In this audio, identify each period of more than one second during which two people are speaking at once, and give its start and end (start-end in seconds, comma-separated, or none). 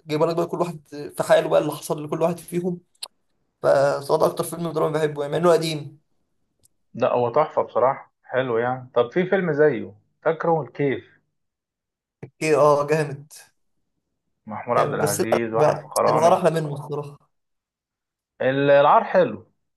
14.8-16.4